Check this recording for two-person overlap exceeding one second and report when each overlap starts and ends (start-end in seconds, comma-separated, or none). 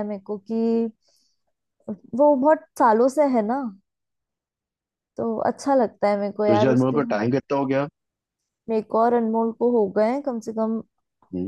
none